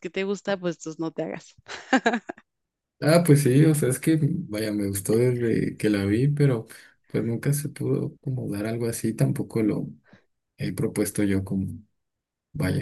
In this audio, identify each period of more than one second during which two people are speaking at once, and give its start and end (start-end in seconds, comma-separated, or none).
none